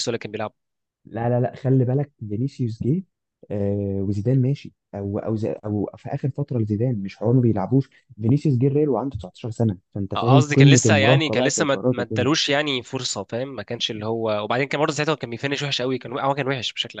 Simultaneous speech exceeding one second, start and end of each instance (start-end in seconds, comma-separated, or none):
10.1-12.3